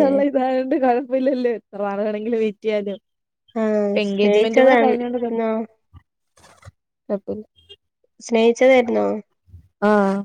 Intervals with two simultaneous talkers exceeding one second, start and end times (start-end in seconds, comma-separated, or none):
4.0-5.3